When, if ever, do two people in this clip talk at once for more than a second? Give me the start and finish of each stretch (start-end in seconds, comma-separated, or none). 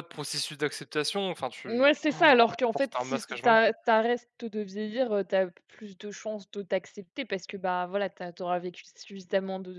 1.7-3.7